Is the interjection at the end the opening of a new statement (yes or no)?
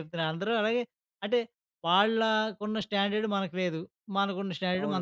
no